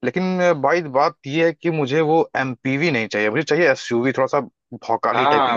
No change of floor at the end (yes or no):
no